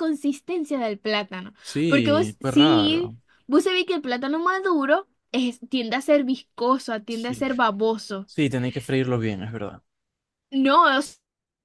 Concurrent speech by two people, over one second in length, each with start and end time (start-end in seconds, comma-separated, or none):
1.6-3.2